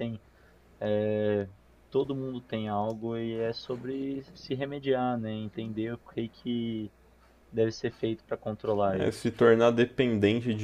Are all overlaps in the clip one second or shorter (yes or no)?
yes